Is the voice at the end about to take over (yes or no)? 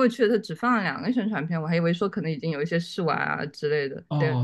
yes